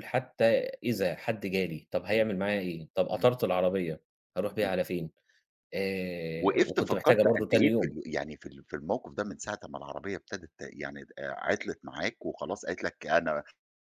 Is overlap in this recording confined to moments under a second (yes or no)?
no